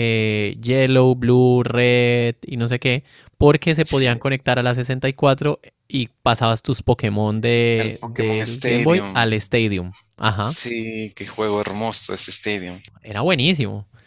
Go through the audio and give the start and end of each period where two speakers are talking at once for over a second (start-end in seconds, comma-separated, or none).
7.8-9.3